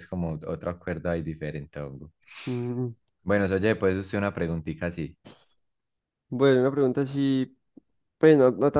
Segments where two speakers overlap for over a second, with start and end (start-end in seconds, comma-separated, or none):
none